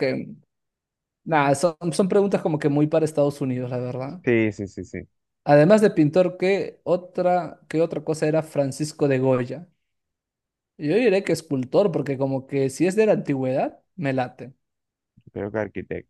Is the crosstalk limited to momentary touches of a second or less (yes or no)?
yes